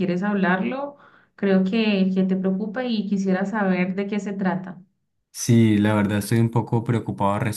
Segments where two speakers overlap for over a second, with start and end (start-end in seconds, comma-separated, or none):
none